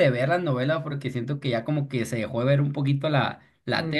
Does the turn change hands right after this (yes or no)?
yes